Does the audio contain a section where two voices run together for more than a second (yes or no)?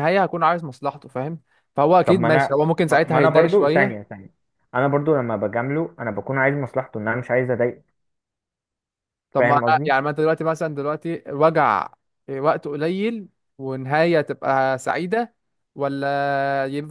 yes